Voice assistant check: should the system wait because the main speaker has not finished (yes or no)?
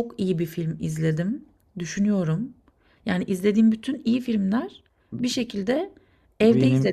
yes